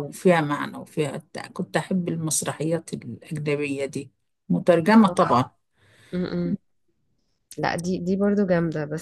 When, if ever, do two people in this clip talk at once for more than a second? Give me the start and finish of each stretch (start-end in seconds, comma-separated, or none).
none